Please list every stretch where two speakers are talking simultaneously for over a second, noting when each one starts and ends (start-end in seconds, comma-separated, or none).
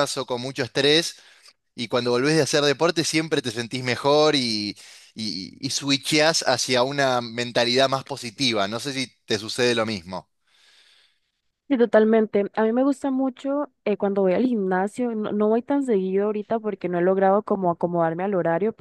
none